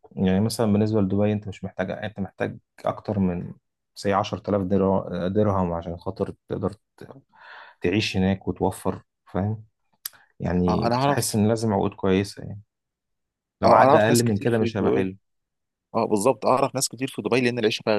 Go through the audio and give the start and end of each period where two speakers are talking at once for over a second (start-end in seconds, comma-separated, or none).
13.6-15.2